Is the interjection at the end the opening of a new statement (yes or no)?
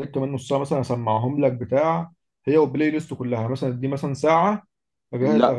no